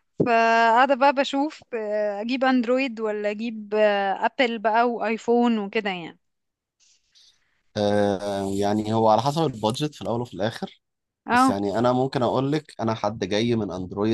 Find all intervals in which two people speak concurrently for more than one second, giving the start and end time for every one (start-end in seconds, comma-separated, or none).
none